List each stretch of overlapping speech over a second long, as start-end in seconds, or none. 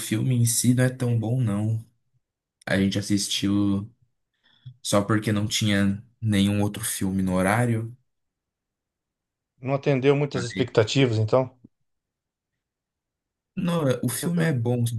none